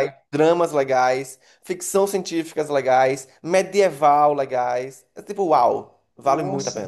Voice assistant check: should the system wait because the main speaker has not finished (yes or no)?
yes